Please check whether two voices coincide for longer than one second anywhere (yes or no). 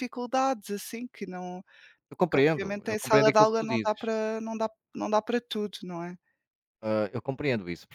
yes